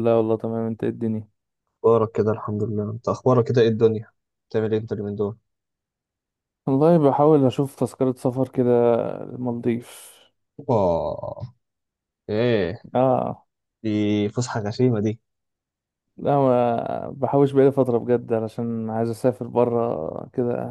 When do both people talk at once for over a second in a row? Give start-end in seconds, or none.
none